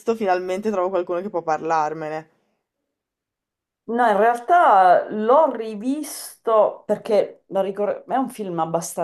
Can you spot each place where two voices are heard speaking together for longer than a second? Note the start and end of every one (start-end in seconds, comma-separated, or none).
none